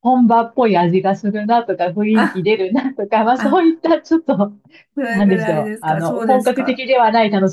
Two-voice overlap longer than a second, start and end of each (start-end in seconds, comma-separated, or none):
5.1-6.8